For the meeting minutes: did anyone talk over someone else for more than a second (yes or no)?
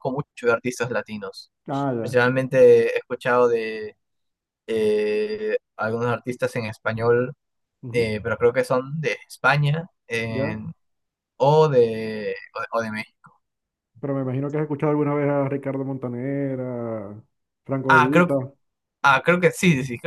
no